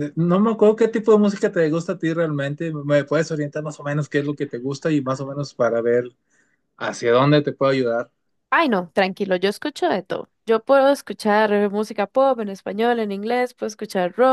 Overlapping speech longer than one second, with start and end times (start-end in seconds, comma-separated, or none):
none